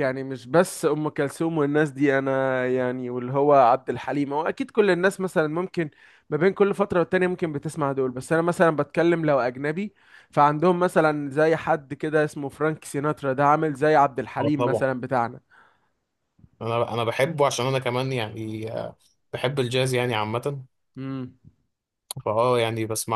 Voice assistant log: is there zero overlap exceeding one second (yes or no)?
yes